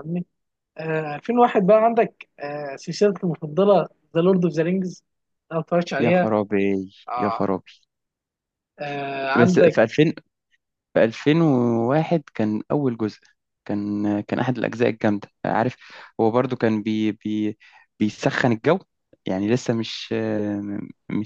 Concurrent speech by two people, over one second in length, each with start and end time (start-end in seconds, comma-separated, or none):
none